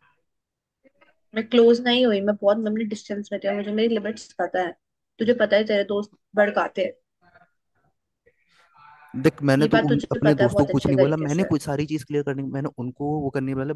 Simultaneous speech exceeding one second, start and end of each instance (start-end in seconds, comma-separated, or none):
9.6-11.5